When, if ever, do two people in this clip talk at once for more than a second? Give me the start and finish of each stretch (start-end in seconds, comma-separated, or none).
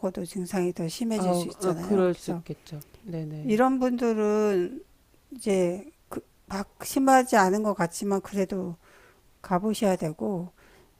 1.1-2.4